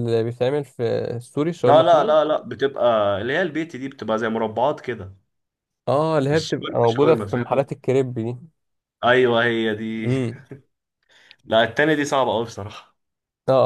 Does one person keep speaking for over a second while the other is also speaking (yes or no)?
yes